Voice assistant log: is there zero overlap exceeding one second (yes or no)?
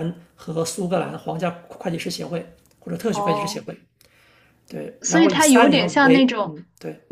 no